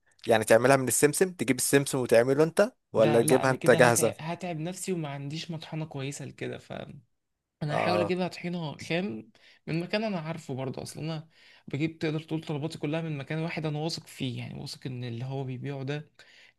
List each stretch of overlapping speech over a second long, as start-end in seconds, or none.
3.0-4.3